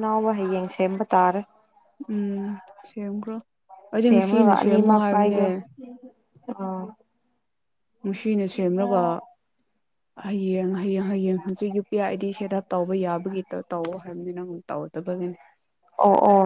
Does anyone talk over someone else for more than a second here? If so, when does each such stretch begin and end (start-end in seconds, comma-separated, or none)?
4.0-5.4